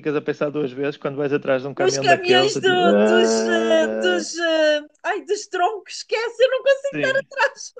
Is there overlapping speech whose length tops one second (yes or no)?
yes